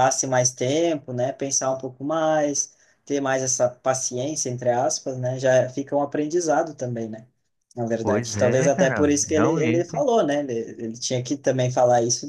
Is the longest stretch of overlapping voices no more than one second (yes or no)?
no